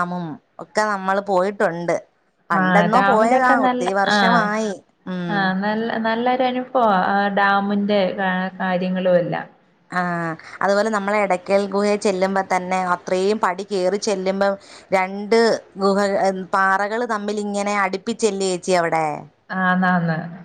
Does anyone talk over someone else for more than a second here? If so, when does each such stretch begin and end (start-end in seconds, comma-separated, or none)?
2.6-4.4